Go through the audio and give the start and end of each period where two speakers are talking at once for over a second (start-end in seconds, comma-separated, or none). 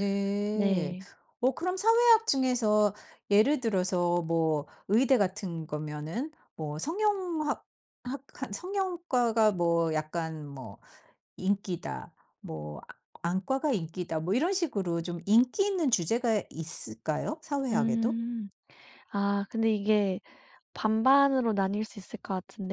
none